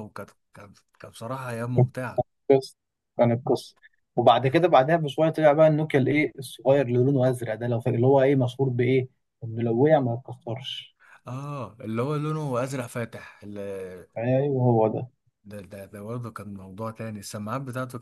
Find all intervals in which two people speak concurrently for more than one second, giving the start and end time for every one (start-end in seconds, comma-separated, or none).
none